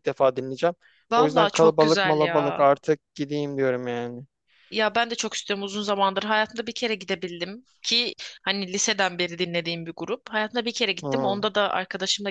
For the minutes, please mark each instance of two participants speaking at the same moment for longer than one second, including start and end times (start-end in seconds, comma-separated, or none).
1.2-2.7